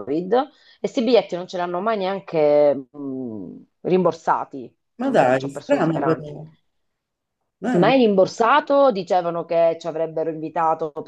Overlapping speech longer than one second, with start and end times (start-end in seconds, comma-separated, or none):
5.0-6.3